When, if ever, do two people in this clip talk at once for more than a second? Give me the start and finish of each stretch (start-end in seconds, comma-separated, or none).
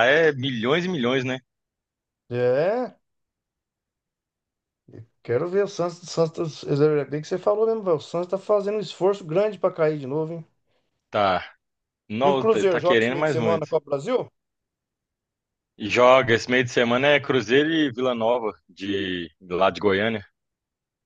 12.2-13.7